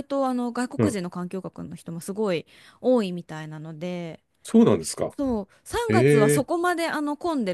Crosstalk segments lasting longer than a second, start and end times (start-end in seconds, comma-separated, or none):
none